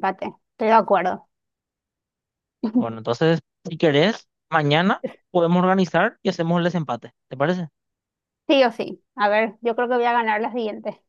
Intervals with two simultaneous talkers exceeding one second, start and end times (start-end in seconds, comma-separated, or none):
none